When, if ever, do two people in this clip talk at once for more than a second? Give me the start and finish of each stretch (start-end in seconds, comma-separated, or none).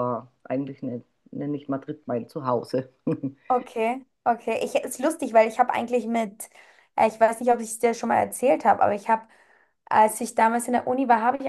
none